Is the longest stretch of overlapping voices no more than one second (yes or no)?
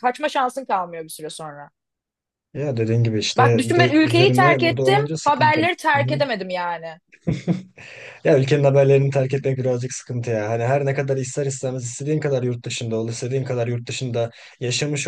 no